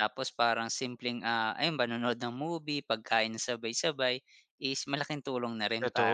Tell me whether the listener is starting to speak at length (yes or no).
yes